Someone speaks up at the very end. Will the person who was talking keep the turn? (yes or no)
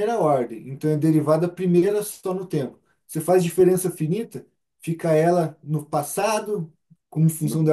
yes